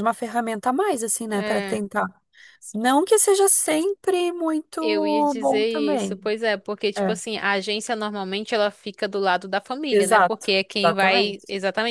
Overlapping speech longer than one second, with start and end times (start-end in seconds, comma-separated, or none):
4.8-6.2, 9.9-11.4